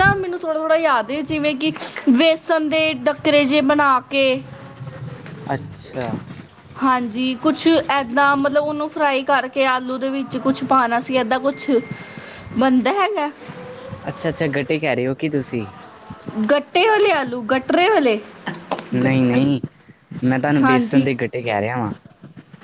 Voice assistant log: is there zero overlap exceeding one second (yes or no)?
yes